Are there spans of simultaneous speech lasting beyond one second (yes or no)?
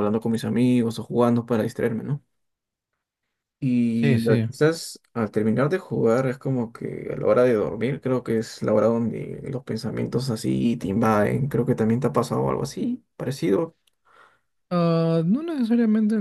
no